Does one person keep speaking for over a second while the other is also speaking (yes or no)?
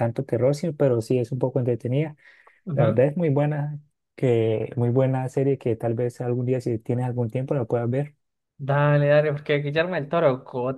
no